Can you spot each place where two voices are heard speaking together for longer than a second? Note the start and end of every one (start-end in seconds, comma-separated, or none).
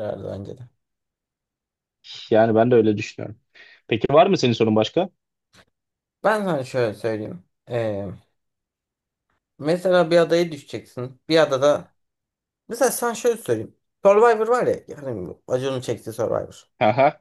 none